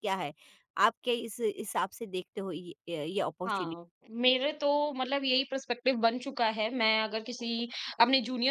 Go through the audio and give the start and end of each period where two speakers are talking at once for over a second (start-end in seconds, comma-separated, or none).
none